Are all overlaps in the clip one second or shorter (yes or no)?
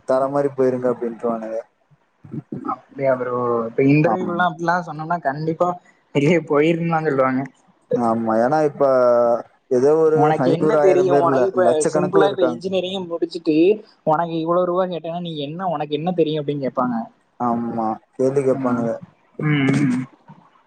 no